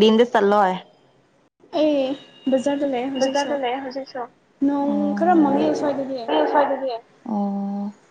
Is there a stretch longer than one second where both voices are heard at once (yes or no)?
no